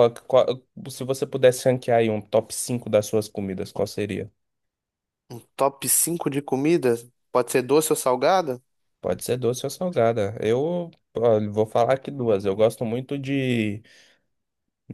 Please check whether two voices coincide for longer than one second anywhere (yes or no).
no